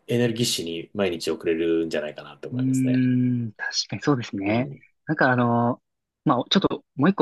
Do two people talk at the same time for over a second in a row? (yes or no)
no